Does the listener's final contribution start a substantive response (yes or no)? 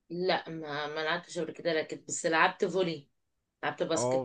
yes